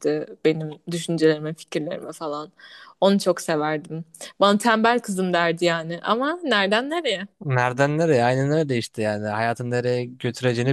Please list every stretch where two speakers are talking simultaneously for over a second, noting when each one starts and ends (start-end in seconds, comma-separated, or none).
none